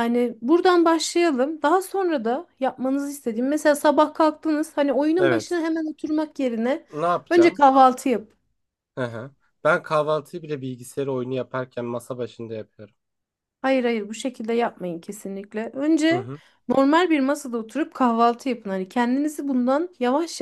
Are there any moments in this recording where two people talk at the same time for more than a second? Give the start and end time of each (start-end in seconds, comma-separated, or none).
none